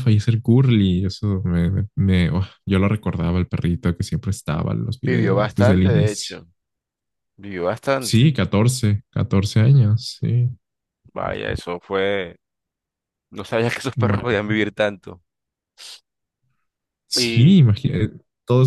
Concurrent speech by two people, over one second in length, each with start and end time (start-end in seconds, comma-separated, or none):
5.0-6.4